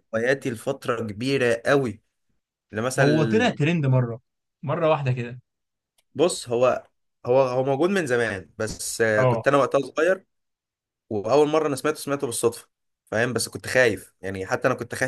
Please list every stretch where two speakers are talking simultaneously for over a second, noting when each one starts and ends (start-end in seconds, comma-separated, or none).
none